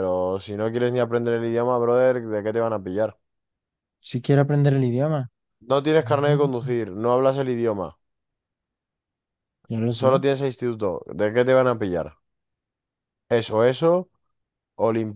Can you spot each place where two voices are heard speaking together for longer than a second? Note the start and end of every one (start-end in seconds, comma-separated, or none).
none